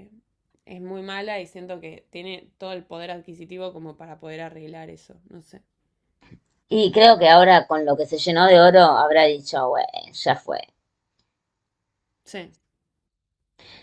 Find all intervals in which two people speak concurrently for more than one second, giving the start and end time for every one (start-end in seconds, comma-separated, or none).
none